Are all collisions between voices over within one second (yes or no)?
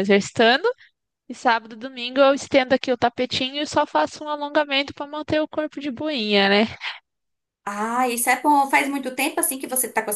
yes